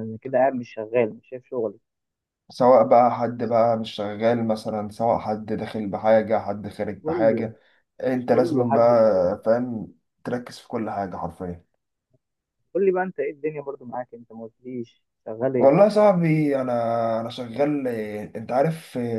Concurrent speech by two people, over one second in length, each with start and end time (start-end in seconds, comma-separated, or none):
8.3-9.5